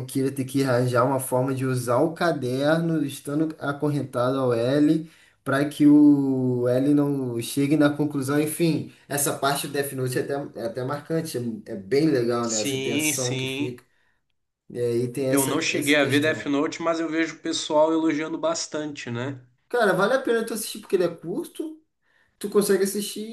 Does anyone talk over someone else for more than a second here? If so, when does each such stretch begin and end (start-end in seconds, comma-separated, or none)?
12.5-13.8, 15.3-16.5